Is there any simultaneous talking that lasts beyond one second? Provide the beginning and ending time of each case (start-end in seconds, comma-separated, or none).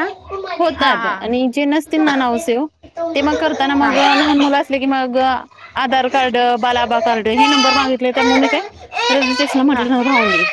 0.8-2.5